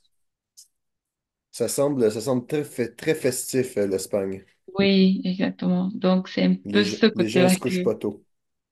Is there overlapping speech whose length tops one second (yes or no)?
yes